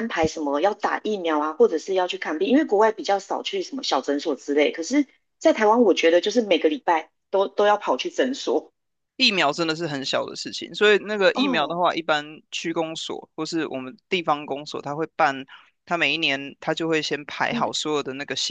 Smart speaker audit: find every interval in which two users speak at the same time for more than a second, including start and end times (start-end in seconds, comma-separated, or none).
none